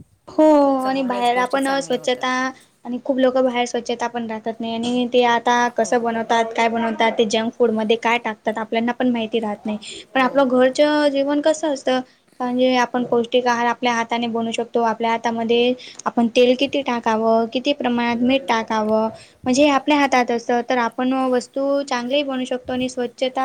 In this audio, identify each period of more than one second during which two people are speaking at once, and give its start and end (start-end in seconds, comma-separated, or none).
0.9-2.3